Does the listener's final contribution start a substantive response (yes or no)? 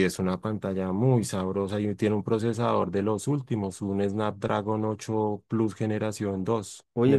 yes